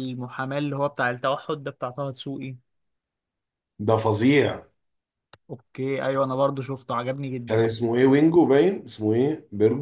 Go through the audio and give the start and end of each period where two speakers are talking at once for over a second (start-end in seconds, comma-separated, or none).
none